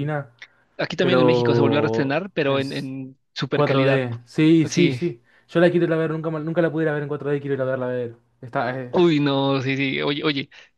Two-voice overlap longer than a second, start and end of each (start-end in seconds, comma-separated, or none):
1.0-2.9